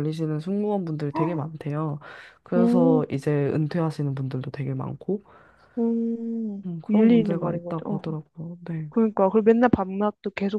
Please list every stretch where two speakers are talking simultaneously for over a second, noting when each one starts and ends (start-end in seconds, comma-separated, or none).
6.7-8.1